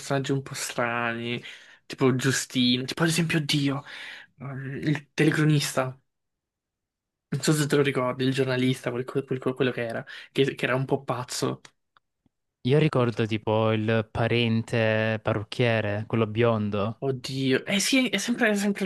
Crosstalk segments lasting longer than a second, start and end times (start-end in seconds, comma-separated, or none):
none